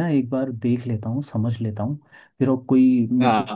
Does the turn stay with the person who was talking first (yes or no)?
yes